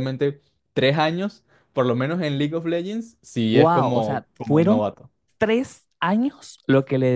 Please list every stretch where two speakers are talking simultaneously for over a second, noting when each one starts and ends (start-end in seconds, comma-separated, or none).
3.5-4.8